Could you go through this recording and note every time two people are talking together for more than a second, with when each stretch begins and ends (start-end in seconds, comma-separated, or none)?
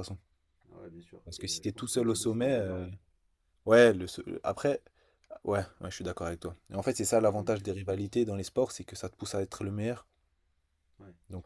1.2-2.9